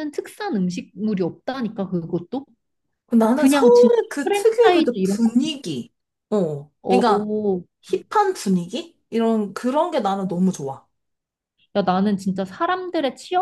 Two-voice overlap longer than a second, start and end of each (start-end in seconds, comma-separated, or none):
3.3-5.3